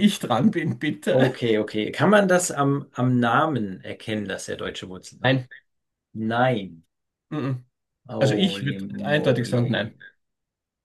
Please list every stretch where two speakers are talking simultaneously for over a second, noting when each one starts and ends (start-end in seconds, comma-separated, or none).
8.2-9.9